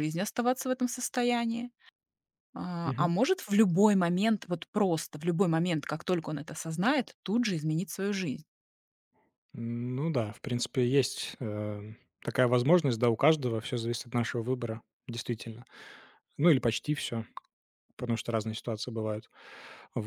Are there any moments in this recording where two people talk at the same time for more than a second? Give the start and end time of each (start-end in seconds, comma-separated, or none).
none